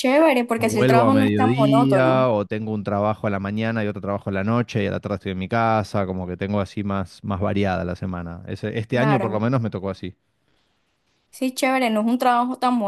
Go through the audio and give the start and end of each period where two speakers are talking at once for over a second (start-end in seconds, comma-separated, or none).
0.6-2.3